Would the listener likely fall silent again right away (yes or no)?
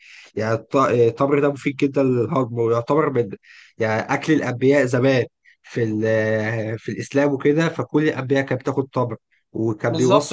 no